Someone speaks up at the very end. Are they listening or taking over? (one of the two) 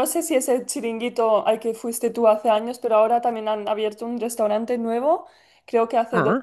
listening